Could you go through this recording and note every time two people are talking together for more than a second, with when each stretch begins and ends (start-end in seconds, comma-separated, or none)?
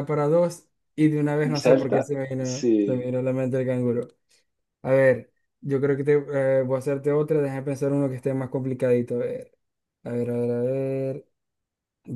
1.4-3.1